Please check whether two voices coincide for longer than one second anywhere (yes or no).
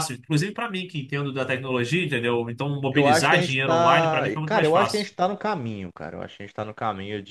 yes